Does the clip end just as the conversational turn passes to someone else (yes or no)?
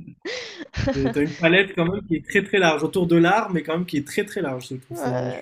yes